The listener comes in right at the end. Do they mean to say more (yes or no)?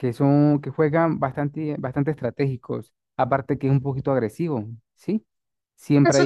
yes